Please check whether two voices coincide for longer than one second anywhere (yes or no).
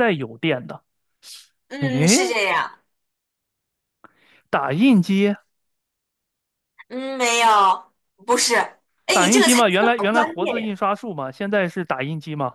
yes